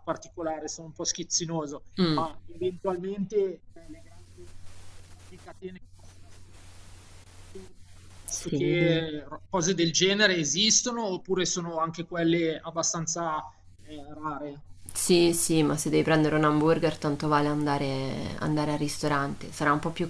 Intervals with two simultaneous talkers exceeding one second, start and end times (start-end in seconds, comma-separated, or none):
none